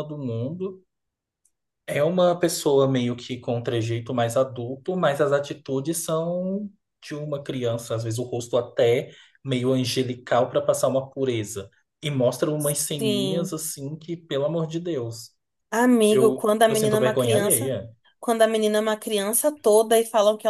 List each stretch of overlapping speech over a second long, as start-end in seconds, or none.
16.1-17.8